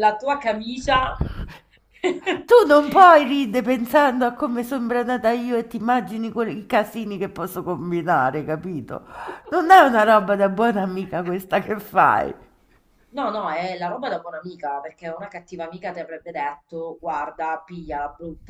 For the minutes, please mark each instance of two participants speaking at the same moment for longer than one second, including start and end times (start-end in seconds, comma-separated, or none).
none